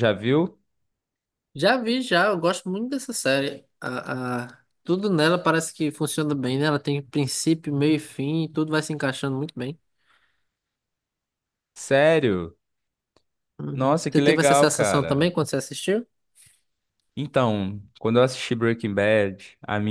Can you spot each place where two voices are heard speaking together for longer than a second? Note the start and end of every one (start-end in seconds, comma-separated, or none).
13.7-15.3